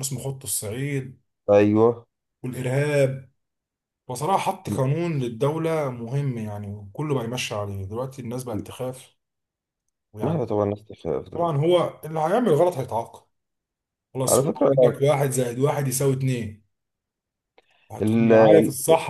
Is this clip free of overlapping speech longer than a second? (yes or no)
yes